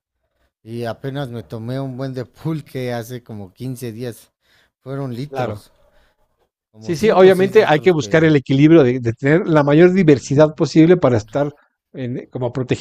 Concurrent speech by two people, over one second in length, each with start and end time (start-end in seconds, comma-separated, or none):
6.8-8.3